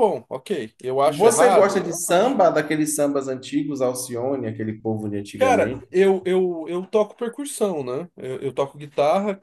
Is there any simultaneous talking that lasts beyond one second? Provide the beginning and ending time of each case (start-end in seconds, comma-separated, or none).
1.0-2.4